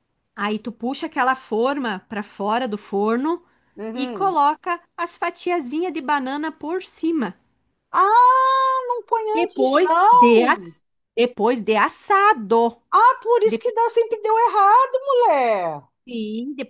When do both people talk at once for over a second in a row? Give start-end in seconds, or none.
9.3-10.7